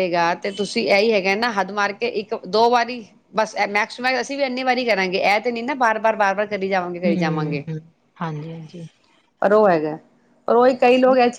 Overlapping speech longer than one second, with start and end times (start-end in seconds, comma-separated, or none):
none